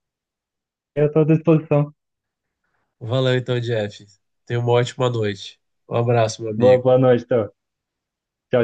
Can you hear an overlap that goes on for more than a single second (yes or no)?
no